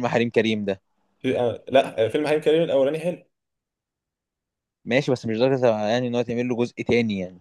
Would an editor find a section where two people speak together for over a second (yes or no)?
no